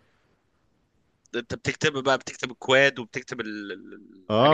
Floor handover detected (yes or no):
yes